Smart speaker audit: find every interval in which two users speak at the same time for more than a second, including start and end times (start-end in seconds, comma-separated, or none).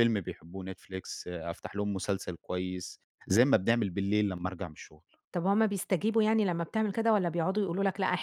none